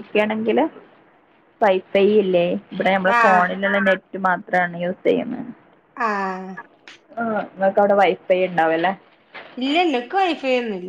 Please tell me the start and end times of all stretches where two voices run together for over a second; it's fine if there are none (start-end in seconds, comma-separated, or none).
none